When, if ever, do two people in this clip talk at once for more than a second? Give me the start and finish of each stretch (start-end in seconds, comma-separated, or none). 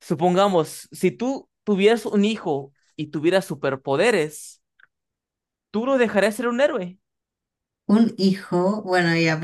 none